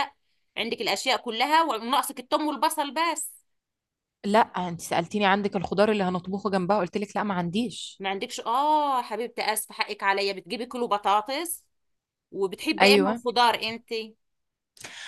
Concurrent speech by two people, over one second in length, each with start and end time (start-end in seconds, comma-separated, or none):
none